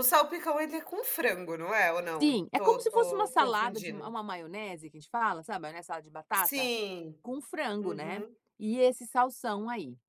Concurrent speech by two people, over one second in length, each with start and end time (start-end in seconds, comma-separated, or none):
2.2-4.2